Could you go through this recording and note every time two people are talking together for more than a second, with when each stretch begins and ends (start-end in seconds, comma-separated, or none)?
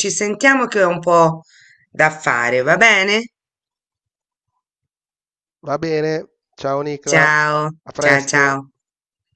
7.1-8.6